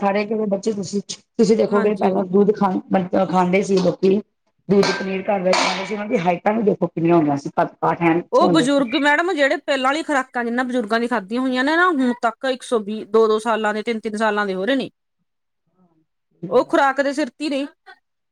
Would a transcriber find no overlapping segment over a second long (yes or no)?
yes